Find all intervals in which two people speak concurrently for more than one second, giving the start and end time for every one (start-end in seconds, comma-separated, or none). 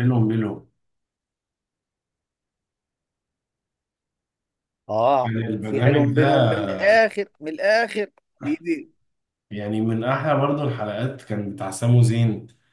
5.2-6.6